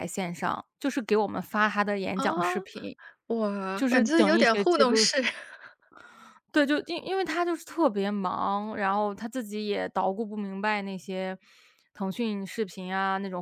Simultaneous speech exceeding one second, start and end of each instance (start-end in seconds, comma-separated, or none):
3.8-5.0